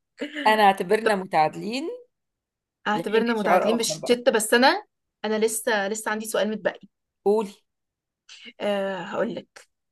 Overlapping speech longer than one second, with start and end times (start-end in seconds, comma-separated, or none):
2.9-4.2